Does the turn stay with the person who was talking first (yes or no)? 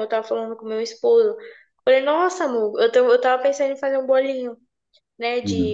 yes